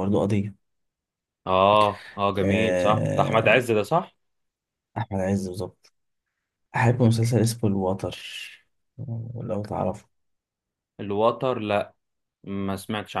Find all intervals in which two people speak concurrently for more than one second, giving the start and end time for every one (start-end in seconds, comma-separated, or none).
2.4-3.6